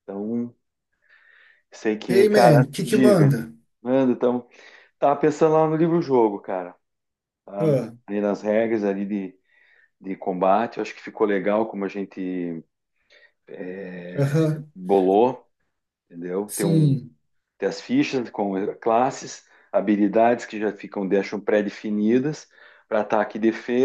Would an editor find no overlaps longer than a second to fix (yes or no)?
no